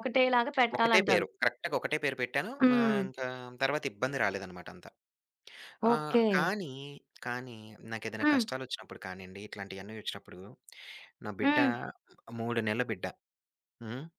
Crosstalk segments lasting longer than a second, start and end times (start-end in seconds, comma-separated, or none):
none